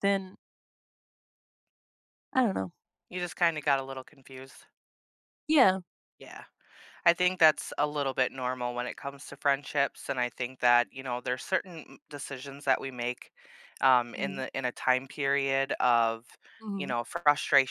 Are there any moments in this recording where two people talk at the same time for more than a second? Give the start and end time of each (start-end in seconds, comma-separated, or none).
none